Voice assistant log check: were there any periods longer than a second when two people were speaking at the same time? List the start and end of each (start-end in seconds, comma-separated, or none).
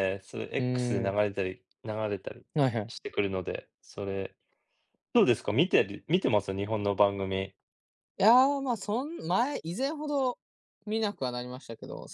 none